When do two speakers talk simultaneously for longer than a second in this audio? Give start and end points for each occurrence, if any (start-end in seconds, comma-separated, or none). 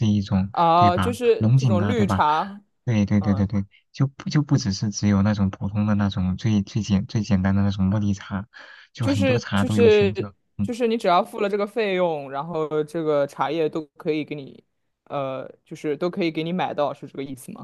0.5-2.2, 9.0-10.7